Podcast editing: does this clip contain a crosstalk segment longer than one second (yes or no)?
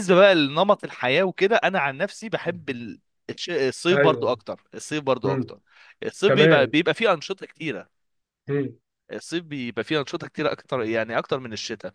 no